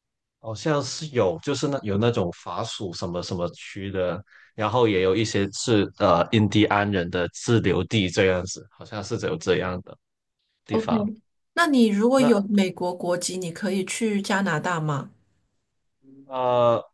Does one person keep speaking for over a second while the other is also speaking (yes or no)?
no